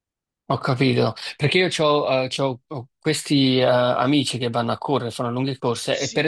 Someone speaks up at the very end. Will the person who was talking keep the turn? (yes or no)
yes